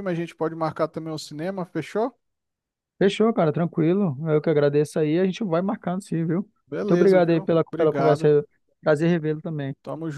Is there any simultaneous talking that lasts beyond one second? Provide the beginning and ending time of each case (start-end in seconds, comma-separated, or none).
6.8-8.3